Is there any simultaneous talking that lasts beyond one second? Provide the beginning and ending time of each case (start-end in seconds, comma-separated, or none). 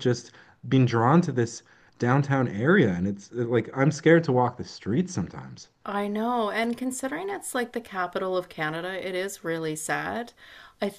none